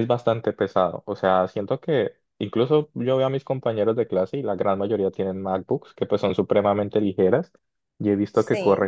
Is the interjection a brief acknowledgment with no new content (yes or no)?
yes